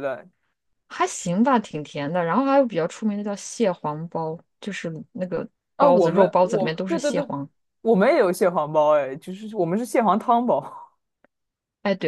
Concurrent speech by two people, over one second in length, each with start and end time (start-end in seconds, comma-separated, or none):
5.8-7.3